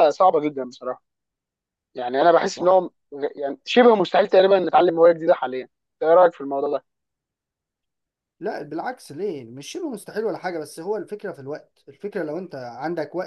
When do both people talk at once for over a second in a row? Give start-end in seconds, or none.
none